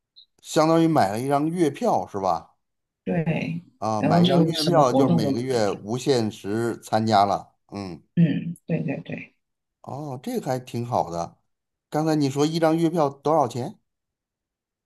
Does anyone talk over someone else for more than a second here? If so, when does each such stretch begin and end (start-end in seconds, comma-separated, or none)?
4.0-5.8